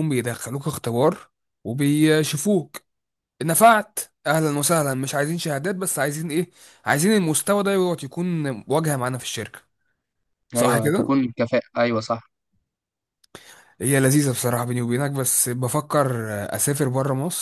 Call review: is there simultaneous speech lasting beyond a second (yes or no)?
no